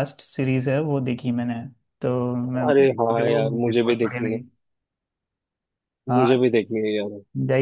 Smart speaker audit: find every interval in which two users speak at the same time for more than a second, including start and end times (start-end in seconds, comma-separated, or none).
2.7-4.4